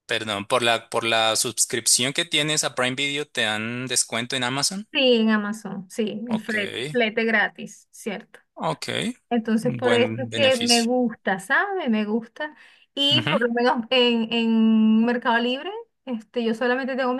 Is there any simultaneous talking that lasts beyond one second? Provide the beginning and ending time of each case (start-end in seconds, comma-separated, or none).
9.6-10.9